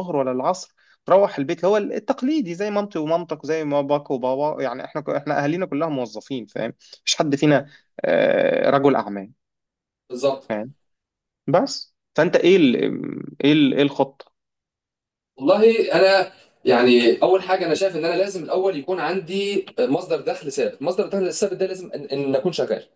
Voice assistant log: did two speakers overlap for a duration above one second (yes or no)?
no